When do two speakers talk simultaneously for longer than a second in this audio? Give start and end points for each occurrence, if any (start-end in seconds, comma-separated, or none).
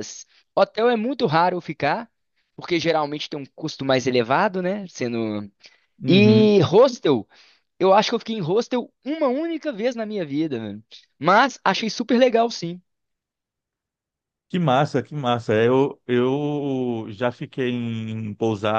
none